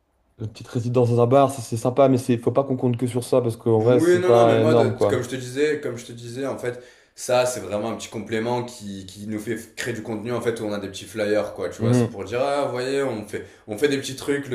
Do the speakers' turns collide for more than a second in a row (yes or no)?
yes